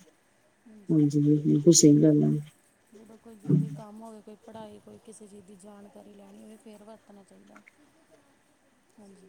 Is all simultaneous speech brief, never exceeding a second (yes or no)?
yes